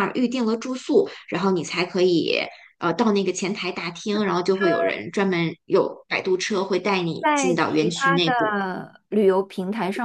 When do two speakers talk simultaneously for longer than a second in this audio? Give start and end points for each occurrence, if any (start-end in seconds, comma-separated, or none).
7.2-8.6